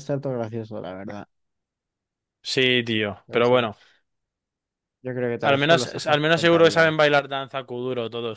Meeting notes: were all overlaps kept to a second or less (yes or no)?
no